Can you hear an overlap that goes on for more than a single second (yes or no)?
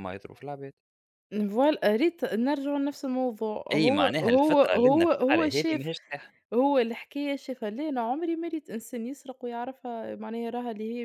yes